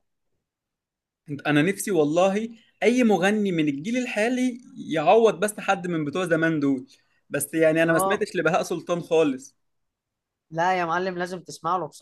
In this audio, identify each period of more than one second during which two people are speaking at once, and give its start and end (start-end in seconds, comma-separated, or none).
none